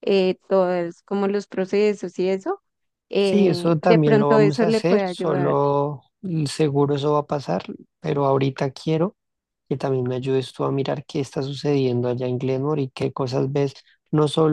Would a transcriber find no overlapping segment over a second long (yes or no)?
no